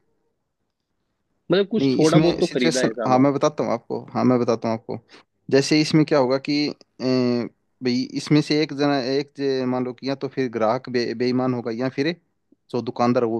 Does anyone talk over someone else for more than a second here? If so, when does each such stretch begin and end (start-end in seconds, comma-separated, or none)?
1.8-3.3